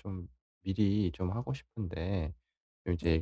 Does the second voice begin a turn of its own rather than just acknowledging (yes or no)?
no